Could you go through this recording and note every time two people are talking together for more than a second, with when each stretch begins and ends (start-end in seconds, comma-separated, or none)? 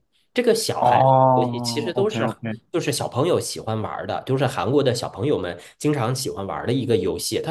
0.8-2.3